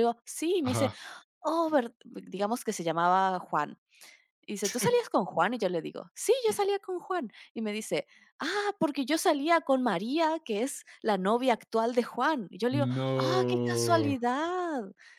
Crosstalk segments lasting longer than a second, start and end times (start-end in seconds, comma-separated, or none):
12.7-14.2